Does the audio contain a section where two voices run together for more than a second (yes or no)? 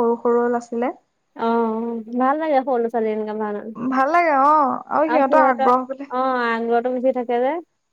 no